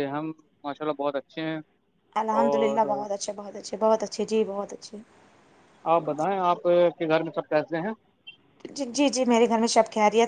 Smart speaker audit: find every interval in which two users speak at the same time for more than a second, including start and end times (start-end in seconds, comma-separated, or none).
none